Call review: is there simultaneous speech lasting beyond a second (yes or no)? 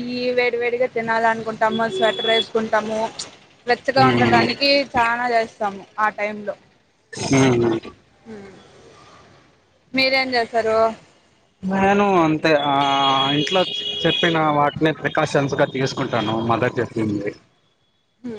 no